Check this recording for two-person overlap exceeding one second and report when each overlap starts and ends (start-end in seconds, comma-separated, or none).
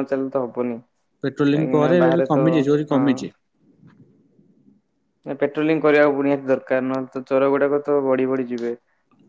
1.2-3.0